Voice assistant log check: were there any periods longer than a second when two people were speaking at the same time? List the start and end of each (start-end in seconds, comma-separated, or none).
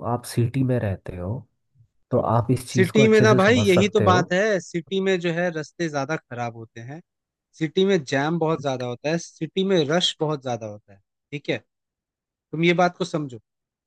2.7-4.2